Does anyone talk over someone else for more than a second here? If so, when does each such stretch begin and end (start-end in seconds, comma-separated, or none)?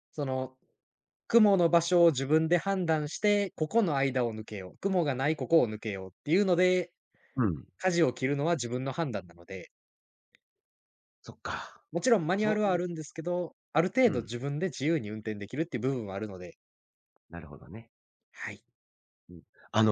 none